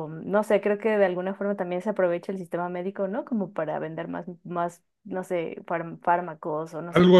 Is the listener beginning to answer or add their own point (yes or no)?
yes